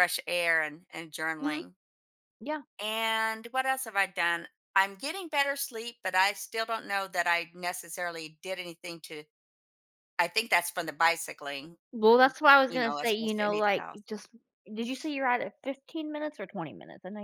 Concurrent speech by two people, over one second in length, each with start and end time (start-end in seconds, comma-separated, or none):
12.7-14.0